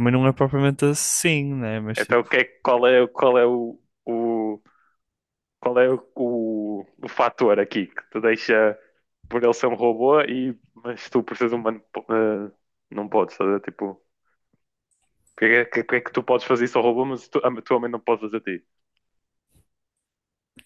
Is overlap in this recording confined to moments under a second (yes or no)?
yes